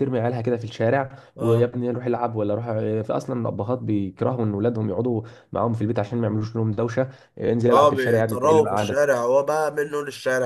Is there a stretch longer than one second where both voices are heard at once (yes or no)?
yes